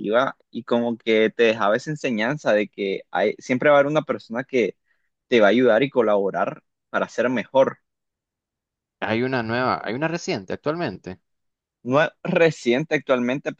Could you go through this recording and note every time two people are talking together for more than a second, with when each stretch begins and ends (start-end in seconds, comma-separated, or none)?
none